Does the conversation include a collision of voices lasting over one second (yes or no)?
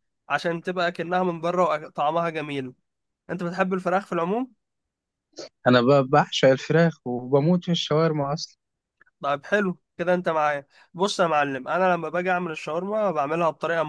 no